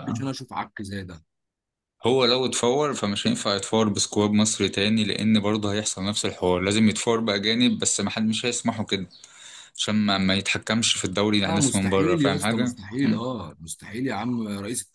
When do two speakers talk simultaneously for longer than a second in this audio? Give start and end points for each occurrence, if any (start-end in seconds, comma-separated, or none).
11.4-13.2